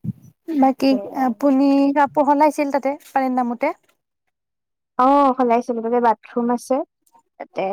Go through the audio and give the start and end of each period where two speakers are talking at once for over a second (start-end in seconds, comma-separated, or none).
none